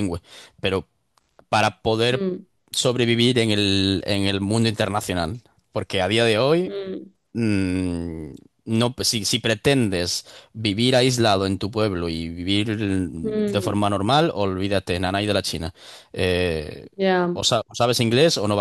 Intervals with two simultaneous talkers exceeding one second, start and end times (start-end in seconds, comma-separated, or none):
none